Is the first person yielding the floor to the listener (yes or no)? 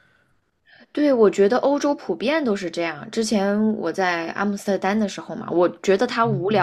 no